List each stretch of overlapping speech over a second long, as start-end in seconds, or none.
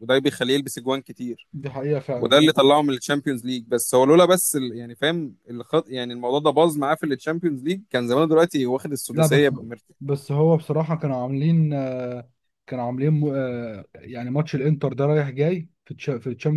none